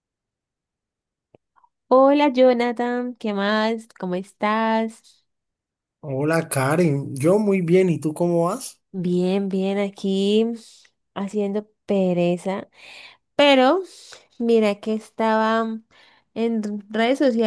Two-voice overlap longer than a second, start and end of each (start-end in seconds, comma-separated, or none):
none